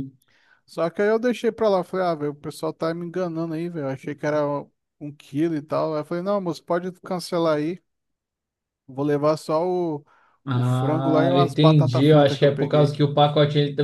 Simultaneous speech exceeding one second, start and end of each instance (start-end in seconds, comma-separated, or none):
10.5-12.9